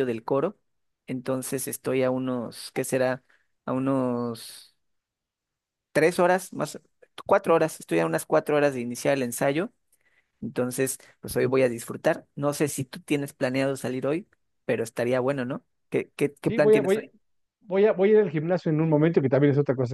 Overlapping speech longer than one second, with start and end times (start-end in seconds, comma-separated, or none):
none